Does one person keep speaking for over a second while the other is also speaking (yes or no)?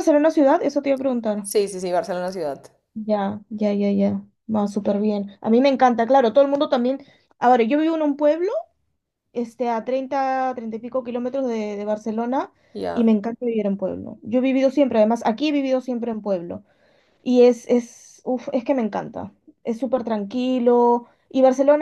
no